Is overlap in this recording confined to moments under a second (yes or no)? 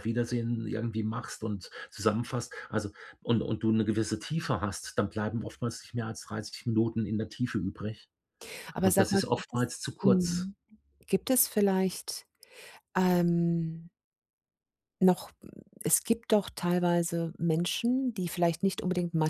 no